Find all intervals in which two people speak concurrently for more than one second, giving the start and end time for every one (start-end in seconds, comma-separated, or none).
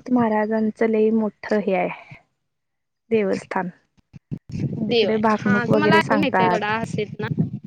4.9-6.7